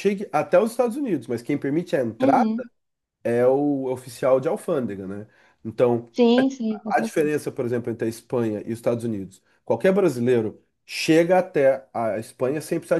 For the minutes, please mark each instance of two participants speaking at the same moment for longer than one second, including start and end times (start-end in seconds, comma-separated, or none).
none